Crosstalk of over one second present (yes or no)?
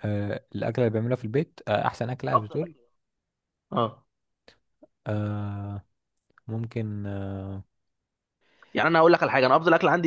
no